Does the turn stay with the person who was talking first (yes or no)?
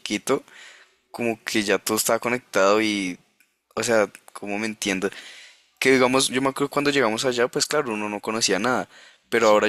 yes